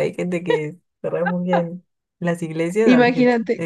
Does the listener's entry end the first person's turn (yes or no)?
yes